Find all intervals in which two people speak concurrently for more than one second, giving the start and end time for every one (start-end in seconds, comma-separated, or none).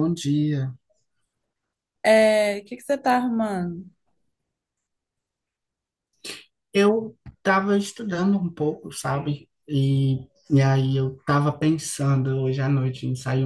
none